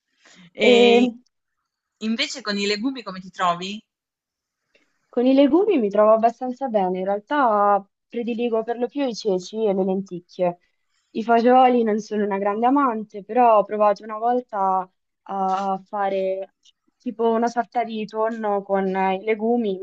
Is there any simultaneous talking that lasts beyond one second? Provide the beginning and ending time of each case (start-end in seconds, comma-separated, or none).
none